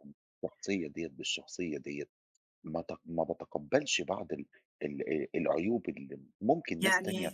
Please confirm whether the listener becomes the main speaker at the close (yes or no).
no